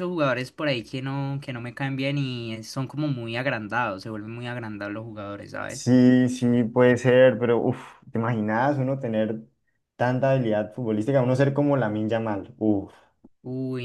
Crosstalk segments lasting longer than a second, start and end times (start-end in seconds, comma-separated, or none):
none